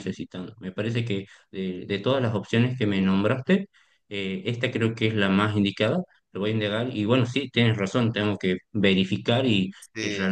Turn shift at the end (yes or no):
no